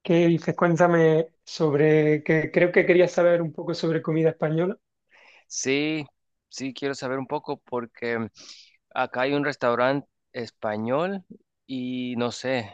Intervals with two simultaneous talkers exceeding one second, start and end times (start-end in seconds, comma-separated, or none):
none